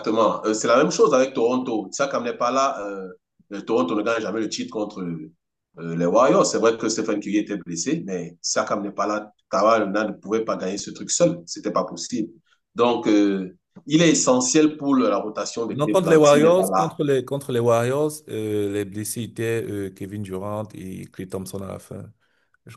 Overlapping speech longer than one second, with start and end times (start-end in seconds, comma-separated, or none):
15.7-16.9